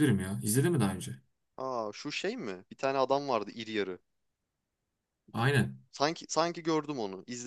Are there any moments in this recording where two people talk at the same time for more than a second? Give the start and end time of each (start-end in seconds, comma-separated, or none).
none